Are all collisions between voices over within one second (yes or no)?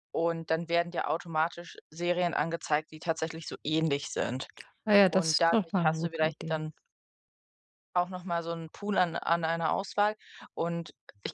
no